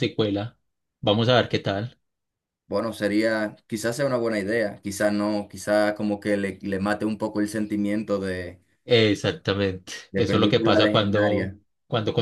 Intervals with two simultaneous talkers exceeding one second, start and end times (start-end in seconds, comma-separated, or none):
10.1-11.6